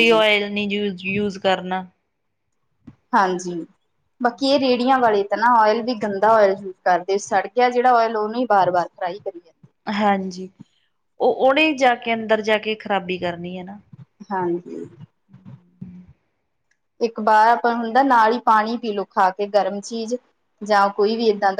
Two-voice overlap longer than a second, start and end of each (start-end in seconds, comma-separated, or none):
none